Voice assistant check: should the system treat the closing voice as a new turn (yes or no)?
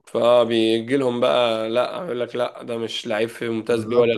yes